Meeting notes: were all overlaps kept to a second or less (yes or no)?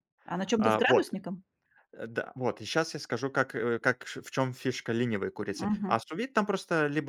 yes